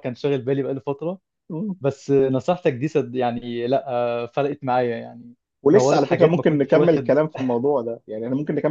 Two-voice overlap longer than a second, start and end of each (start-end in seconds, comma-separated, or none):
5.7-7.1